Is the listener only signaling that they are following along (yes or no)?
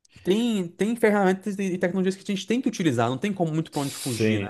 no